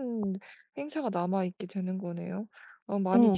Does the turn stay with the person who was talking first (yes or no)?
no